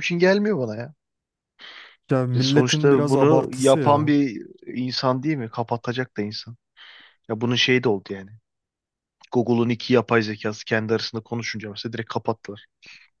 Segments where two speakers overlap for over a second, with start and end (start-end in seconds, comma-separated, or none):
2.4-4.2